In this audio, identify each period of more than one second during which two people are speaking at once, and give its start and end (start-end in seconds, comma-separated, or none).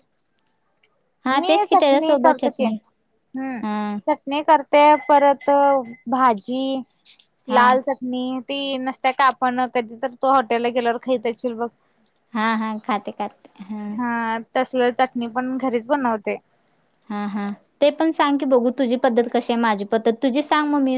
1.4-2.8